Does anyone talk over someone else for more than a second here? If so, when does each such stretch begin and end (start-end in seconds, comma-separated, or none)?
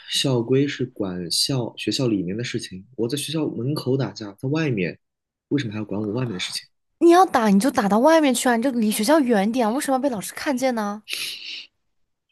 none